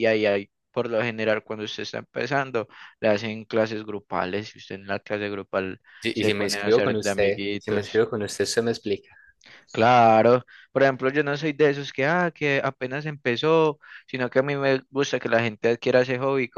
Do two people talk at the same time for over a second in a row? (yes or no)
yes